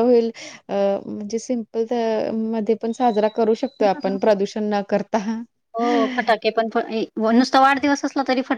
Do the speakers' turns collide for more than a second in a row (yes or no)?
no